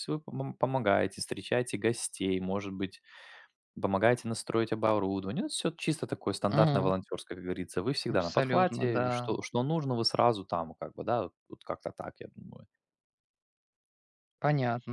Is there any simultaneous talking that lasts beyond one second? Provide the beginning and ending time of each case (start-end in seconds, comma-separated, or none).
8.1-9.3